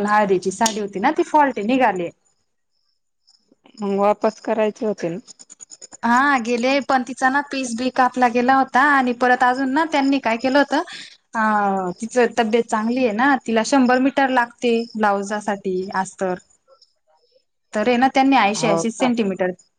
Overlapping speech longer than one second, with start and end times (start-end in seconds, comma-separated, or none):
none